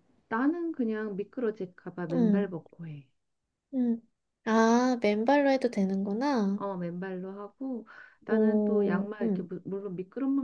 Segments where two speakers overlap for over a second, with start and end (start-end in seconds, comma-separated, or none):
8.3-9.5